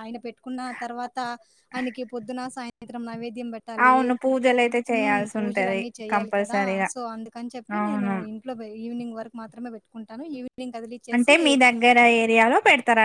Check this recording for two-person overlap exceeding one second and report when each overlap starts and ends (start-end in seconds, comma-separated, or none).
4.9-6.9